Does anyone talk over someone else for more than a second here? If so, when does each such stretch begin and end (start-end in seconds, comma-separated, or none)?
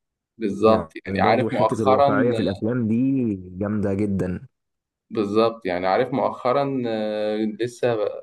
0.7-2.1